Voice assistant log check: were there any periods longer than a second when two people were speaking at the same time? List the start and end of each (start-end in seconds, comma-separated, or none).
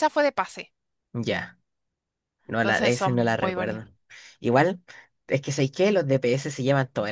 2.6-3.9